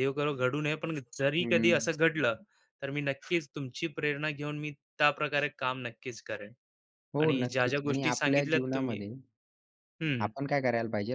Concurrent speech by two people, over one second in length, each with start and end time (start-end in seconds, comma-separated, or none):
7.2-9.0